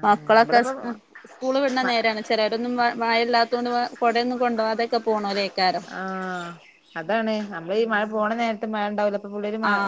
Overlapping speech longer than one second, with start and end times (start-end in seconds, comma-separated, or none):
none